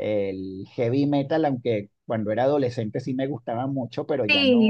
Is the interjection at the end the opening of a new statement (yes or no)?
yes